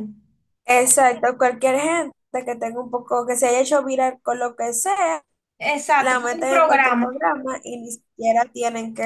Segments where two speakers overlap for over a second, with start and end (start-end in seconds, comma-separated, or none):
6.0-7.2